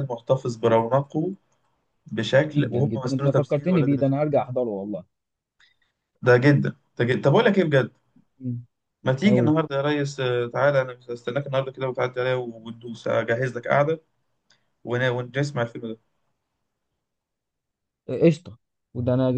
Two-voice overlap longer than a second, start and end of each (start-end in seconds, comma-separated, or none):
2.5-4.1